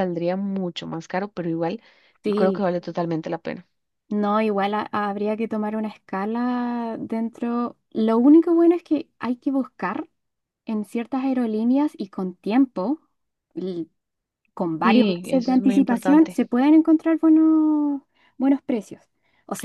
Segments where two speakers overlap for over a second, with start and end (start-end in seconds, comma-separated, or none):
14.8-16.4